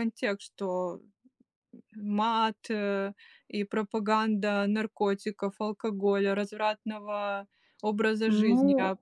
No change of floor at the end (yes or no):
no